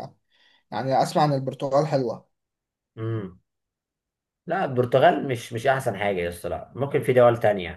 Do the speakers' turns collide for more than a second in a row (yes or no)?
no